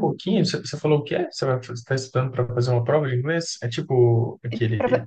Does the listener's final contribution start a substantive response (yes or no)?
yes